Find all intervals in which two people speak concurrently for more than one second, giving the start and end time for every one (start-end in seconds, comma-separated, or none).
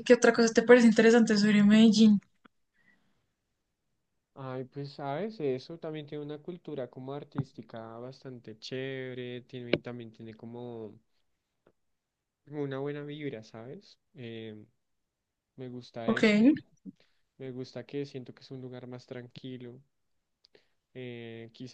none